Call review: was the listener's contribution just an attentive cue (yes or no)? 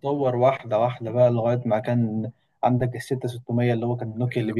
no